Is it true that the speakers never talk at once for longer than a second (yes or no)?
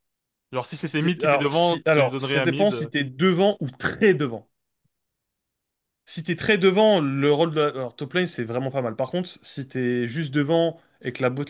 no